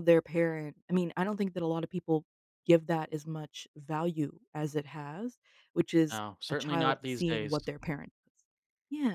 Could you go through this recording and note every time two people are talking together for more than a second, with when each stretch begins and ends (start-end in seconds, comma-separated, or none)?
6.1-7.6